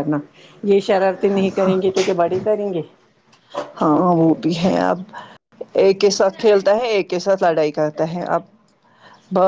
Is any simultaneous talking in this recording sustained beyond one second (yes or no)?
no